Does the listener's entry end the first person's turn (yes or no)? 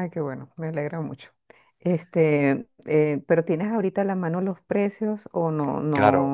yes